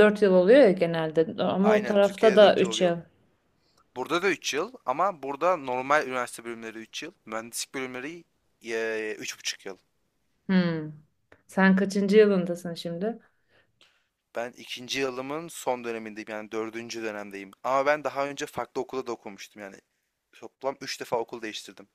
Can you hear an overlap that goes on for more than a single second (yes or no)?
yes